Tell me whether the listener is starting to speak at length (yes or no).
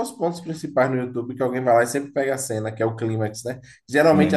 no